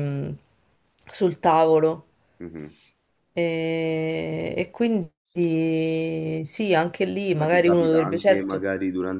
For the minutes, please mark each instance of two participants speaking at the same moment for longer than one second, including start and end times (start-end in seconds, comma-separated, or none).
7.4-8.6